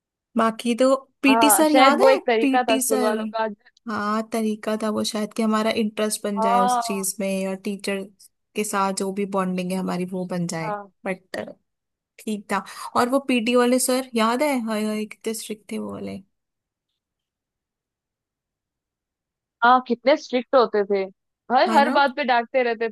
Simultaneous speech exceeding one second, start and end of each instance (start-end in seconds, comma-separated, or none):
1.3-3.1